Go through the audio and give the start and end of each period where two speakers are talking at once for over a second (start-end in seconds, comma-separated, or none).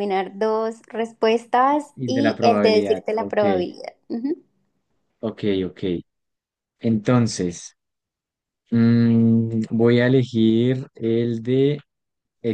1.9-3.4